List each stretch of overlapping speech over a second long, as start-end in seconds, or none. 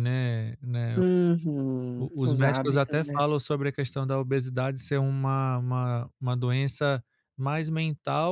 1.9-3.2